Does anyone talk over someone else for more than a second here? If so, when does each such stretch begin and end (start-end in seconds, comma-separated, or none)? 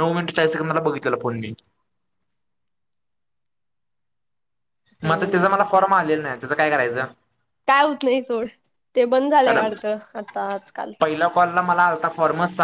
none